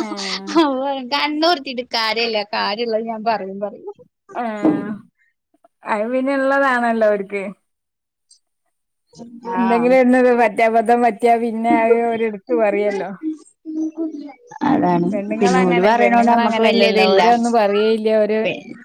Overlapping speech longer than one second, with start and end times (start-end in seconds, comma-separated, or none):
15.1-17.2